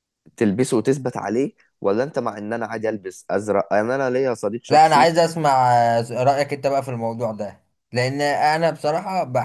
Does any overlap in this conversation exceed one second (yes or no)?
no